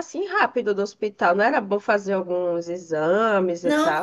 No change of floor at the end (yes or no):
no